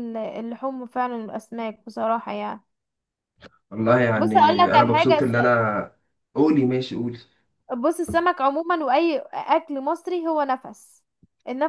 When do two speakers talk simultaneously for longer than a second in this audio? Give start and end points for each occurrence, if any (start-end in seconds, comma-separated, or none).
4.2-5.7